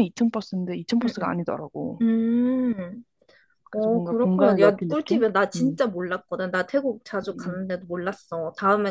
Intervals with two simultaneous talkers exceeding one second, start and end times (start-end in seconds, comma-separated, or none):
3.7-5.8